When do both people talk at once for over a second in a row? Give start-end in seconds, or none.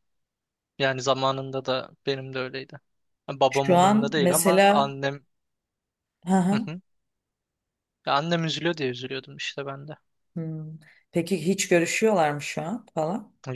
3.5-4.9